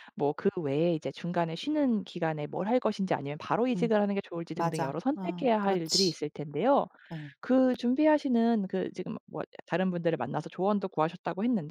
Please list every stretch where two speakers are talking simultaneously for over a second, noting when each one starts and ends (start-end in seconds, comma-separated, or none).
4.5-6.2